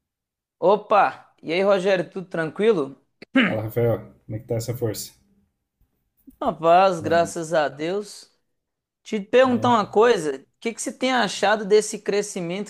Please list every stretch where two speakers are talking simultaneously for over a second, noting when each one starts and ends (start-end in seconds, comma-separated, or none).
none